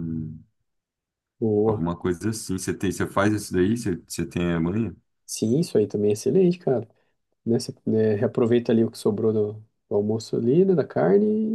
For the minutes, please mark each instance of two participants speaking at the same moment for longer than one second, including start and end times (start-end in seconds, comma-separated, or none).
none